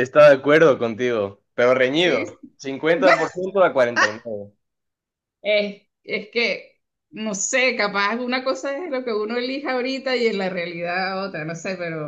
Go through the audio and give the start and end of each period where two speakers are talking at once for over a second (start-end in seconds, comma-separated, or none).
none